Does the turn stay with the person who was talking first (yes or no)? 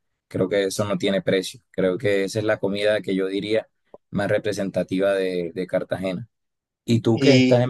yes